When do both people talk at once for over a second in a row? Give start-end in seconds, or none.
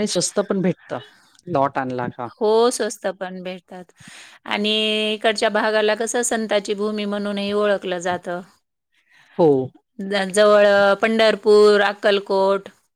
none